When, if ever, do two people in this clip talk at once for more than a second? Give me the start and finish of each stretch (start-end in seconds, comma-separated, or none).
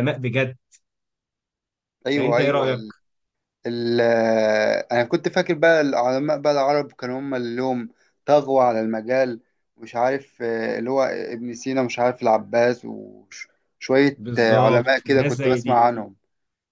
14.2-15.8